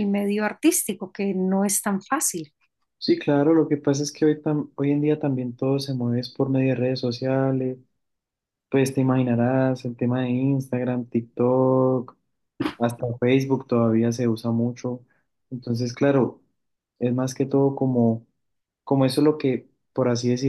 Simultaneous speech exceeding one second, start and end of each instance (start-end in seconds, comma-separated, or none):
none